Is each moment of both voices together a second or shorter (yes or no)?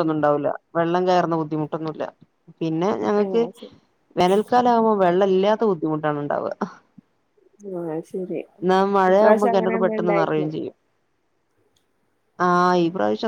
no